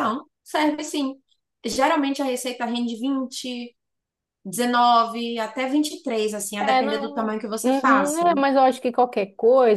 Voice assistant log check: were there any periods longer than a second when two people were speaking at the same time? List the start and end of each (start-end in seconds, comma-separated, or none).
6.6-8.2